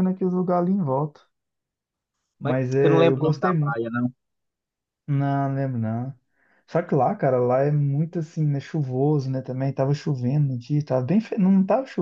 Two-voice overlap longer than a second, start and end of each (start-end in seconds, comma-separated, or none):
2.4-3.8